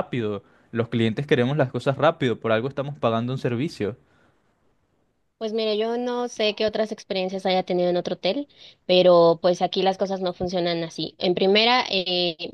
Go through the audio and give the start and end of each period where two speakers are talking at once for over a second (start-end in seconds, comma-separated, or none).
none